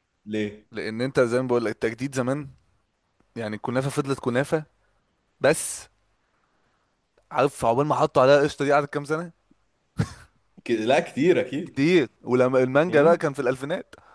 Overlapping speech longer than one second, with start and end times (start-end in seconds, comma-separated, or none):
none